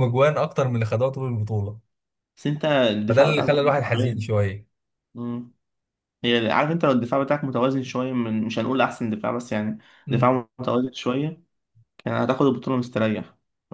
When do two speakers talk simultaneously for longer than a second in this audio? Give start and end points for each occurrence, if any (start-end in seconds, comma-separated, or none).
3.1-4.3